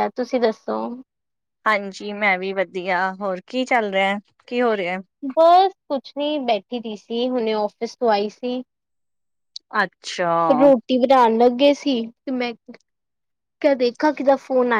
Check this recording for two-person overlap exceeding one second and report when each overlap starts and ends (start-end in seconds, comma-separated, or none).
none